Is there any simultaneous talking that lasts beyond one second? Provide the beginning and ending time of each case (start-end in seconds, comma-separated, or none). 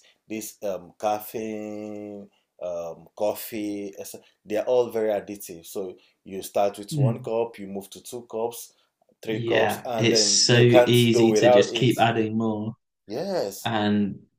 9.3-11.9